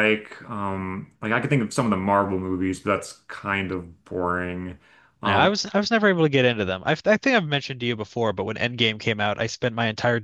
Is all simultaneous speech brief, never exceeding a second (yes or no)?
yes